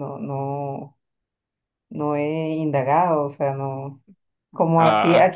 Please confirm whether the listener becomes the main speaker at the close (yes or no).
no